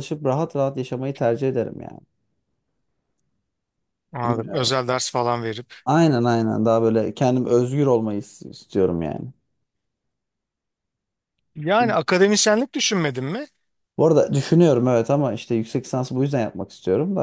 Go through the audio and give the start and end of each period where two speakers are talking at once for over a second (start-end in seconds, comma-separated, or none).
none